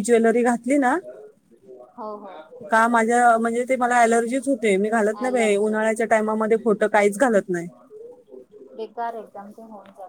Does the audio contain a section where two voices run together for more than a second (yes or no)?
no